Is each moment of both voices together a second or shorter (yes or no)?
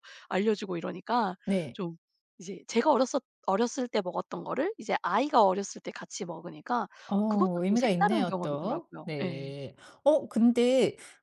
no